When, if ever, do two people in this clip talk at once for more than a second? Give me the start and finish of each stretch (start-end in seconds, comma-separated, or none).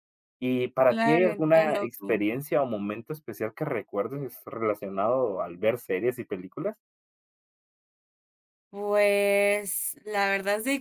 0.8-2.2